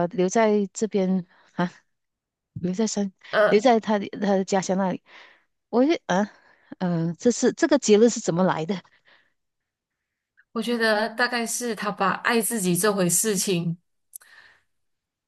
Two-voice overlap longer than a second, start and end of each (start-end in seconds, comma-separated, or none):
none